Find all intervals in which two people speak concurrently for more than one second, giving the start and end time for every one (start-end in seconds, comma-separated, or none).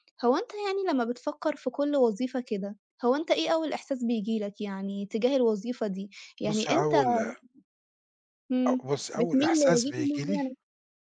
8.8-10.4